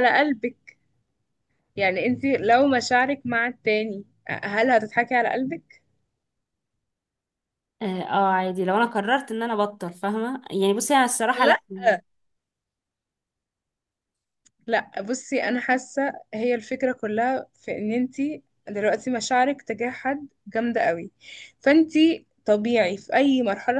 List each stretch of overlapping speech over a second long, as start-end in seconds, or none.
none